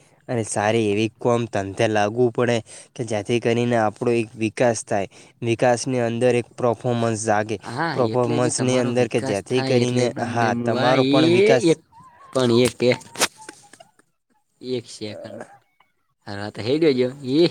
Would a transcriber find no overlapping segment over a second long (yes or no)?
no